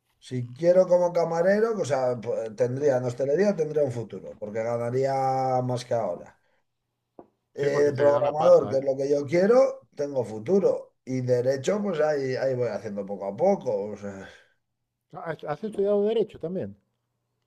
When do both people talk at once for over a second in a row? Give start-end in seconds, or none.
7.5-8.8